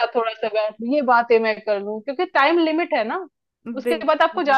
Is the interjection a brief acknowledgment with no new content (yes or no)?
yes